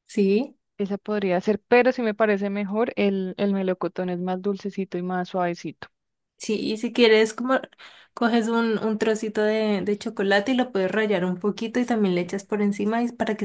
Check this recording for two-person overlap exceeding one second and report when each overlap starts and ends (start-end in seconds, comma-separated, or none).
none